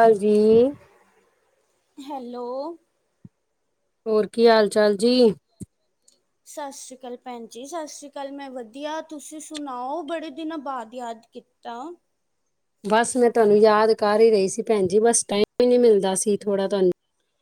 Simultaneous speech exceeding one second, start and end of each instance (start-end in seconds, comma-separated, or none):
none